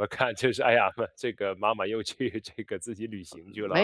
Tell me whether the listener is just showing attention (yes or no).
no